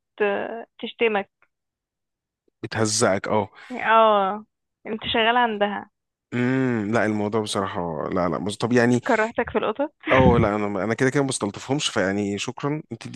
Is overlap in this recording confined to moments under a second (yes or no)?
yes